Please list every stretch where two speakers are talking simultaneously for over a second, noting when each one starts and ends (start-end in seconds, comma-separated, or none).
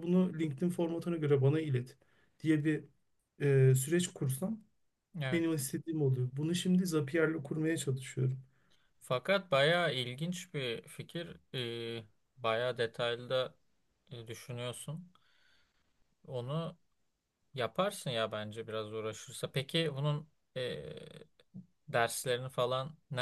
none